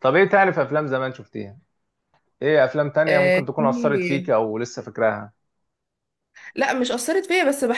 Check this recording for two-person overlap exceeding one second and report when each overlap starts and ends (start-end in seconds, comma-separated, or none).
3.1-4.3